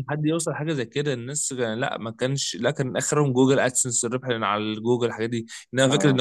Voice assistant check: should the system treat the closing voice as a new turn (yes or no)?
no